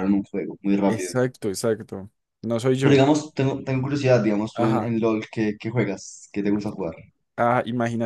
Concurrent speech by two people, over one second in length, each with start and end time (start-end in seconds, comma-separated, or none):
none